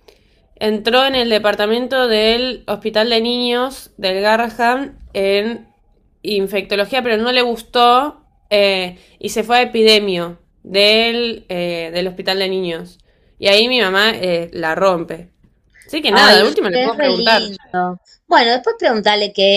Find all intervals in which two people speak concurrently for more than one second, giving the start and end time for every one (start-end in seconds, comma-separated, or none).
16.1-17.5